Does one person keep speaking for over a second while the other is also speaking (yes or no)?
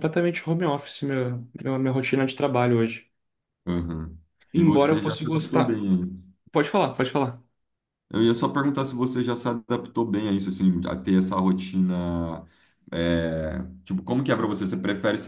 yes